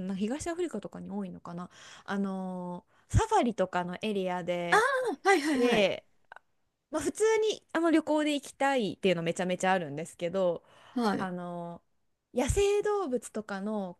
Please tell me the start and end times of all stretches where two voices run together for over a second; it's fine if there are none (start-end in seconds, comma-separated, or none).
none